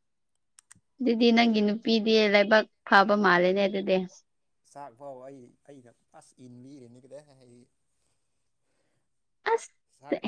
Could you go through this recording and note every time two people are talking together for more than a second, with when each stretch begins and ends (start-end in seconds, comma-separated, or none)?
none